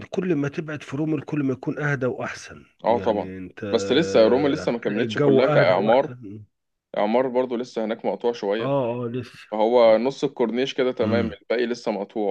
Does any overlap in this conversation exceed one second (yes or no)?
yes